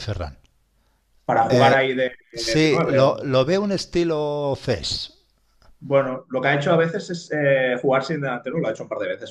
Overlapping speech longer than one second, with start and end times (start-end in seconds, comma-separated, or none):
1.5-3.5